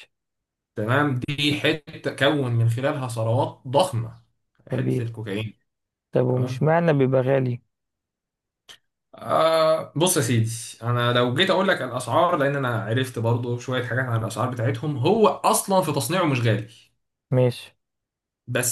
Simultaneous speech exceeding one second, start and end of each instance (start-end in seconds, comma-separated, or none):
none